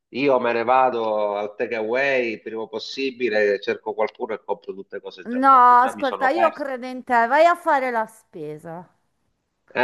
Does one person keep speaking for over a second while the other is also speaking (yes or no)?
yes